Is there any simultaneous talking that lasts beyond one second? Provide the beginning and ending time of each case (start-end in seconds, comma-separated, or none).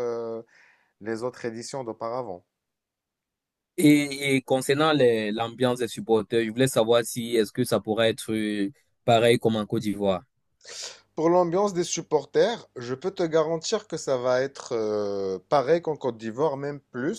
none